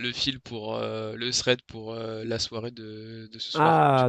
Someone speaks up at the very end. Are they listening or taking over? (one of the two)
taking over